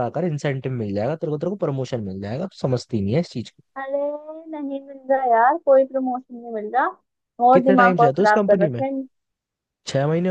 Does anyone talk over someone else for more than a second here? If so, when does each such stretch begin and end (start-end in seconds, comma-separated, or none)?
7.5-8.8